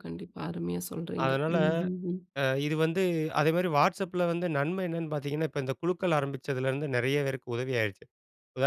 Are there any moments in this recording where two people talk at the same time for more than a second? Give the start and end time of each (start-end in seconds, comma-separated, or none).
none